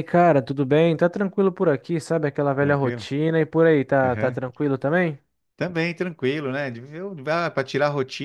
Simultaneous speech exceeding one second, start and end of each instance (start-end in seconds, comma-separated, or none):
none